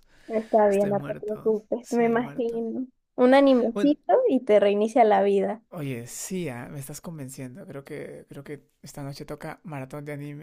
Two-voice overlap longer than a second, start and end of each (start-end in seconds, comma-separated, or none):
0.7-2.6